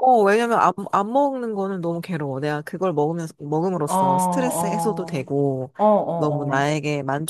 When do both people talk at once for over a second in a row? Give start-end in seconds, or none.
3.8-5.3